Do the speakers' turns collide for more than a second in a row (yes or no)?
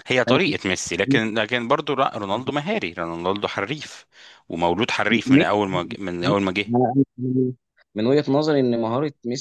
no